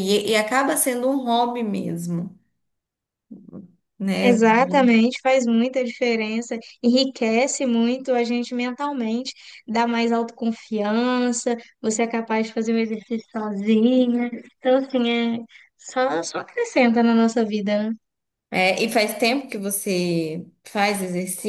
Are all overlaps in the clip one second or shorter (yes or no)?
yes